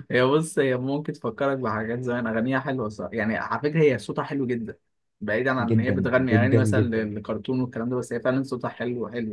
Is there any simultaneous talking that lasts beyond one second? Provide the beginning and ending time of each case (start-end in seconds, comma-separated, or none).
5.6-7.1